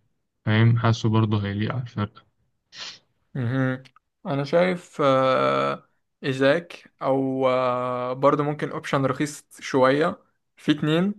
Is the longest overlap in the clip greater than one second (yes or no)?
no